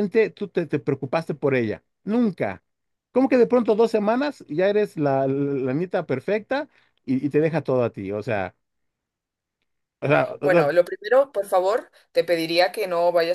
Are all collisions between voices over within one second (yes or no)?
yes